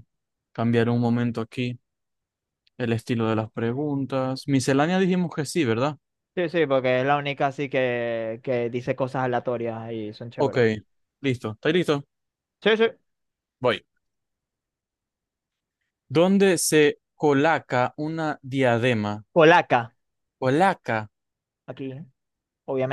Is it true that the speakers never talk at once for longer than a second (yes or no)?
yes